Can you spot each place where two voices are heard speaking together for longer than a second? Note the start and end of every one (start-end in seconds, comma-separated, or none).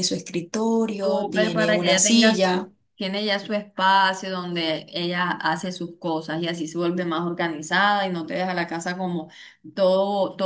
1.0-2.7